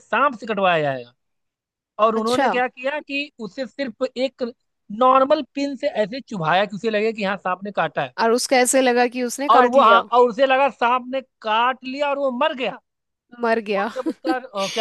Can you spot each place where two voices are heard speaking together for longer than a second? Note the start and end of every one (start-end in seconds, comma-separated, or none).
none